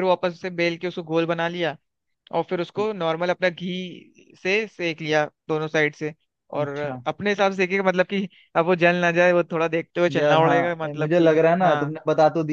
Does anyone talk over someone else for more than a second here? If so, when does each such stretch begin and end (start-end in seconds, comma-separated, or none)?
10.2-12.0